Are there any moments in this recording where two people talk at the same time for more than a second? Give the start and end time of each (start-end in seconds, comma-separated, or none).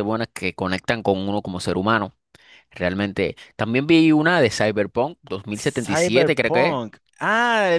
5.5-6.8